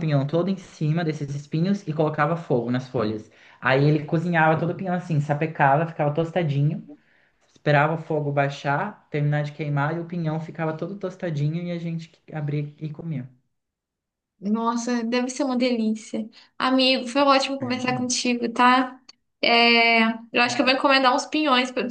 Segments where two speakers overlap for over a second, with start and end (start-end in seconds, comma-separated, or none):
none